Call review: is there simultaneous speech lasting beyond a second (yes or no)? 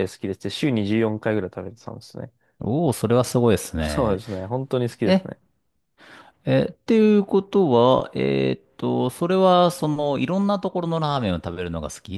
no